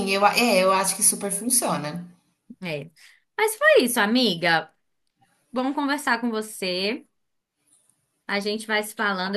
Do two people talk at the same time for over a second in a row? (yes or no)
no